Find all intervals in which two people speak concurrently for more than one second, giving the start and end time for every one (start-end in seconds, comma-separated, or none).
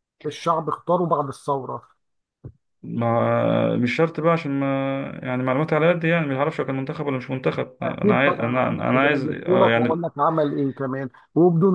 7.8-10.1